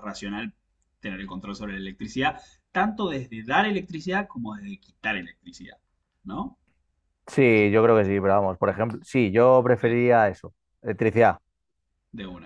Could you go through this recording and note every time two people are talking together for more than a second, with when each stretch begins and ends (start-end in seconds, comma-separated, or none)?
none